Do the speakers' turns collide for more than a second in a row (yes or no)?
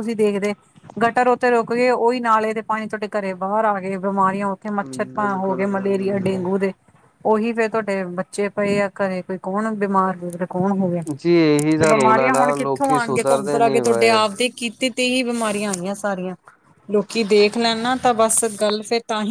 yes